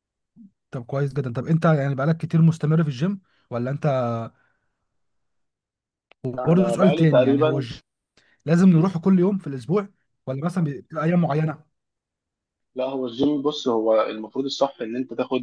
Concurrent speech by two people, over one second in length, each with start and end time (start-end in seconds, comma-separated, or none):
6.4-7.7